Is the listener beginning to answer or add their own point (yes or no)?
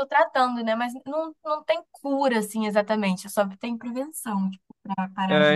yes